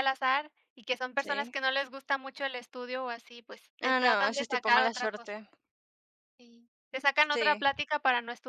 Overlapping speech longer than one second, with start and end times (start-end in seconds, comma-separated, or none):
3.8-5.3